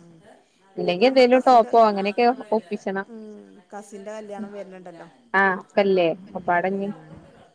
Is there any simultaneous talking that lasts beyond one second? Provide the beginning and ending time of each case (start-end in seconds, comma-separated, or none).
1.2-3.0